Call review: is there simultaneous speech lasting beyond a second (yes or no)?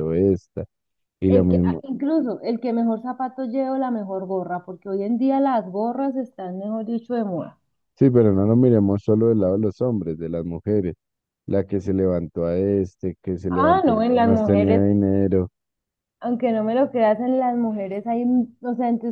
yes